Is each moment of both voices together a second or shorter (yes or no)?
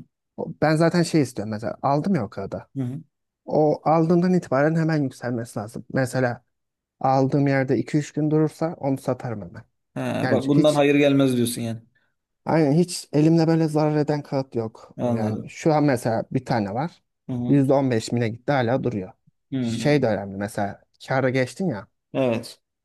yes